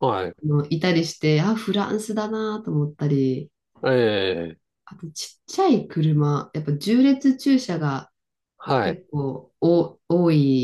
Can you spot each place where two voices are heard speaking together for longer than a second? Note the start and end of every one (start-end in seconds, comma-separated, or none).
none